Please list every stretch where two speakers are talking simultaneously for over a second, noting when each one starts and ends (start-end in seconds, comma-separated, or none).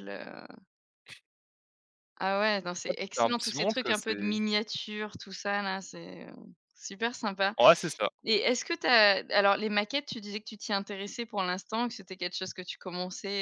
2.9-4.3